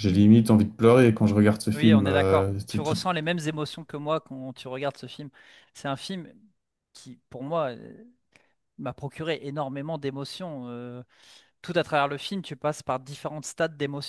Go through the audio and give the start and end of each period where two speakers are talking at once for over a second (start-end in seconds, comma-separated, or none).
1.7-3.0